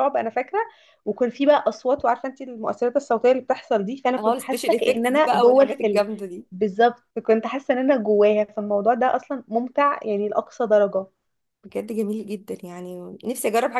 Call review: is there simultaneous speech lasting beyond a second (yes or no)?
yes